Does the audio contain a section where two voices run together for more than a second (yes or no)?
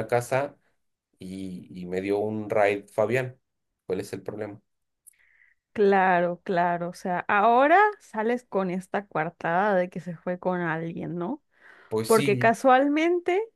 no